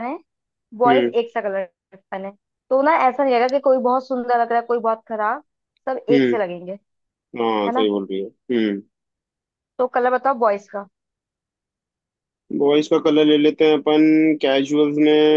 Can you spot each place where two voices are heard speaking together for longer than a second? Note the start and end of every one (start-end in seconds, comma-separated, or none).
none